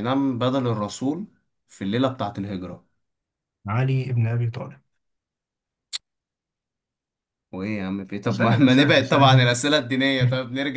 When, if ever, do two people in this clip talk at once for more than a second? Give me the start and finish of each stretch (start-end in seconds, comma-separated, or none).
8.3-9.6